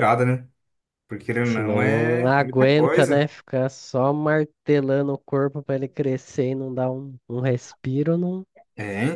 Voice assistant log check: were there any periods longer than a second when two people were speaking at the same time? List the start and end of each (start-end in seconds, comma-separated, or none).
1.4-3.3